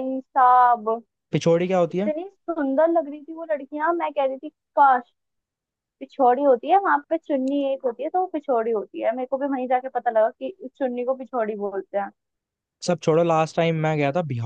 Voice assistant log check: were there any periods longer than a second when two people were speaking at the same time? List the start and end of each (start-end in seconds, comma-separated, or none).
none